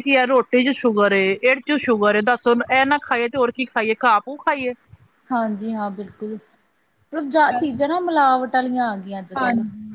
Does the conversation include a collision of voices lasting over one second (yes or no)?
no